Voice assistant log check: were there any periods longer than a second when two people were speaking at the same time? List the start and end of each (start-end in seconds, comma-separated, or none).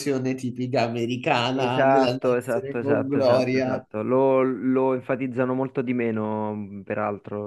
1.5-3.9